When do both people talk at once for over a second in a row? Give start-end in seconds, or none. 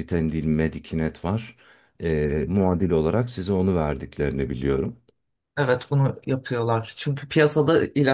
none